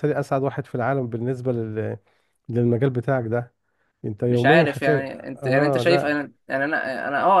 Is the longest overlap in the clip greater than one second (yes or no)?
yes